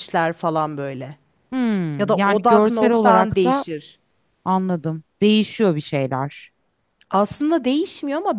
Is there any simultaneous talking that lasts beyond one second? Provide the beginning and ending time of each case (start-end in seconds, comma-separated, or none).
2.0-3.6